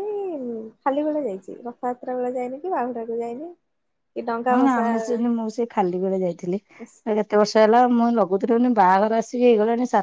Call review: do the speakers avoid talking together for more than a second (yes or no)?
yes